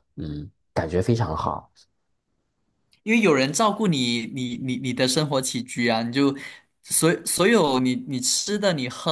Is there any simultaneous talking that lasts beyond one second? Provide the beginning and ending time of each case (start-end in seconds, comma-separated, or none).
none